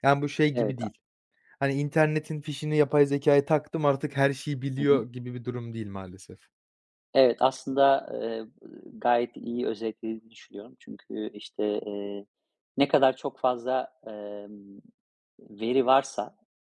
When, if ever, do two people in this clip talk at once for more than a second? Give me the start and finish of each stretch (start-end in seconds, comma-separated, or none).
none